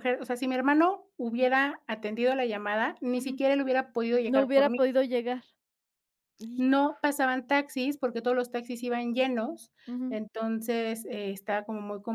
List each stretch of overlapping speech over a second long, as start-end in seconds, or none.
none